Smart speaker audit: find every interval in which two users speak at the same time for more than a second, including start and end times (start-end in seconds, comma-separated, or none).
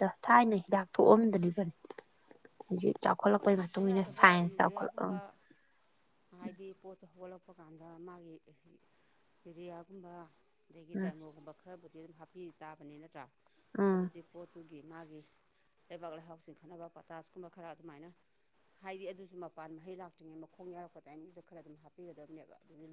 3.4-5.2